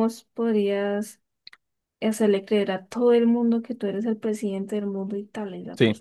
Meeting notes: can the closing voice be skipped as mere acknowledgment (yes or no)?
no